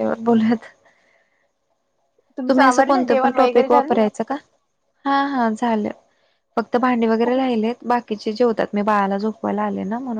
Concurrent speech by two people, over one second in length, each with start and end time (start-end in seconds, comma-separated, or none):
2.5-4.0